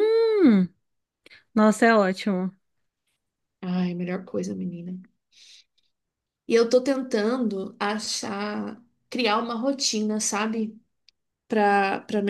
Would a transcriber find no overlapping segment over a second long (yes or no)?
yes